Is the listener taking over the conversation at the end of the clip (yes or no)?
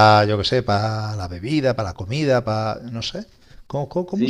yes